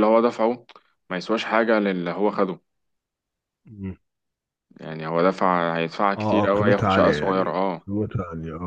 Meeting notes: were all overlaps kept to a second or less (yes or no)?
no